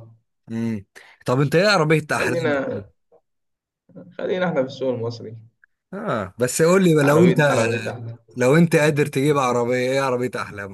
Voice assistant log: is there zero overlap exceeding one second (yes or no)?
yes